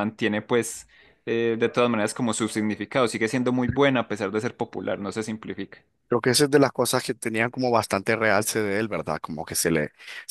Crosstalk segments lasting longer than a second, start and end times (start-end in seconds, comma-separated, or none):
none